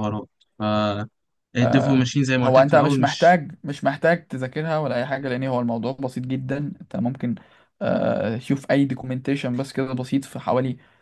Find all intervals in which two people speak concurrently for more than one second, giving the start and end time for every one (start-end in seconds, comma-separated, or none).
1.6-3.4